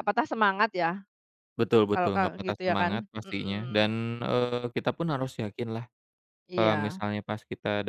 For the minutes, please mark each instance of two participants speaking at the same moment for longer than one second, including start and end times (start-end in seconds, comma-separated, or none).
1.9-3.9